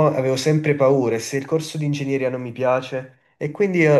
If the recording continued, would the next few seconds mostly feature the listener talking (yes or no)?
no